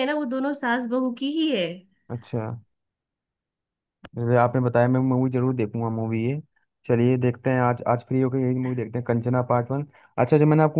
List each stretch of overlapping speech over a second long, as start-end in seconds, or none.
none